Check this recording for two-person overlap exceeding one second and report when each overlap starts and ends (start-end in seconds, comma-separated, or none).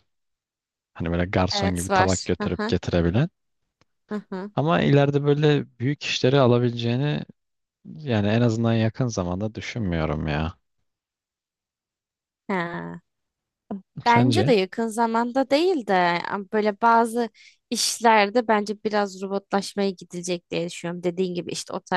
1.5-2.8